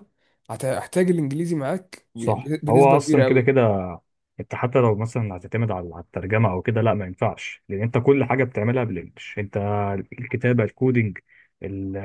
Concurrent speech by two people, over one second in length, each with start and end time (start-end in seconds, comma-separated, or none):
2.1-3.6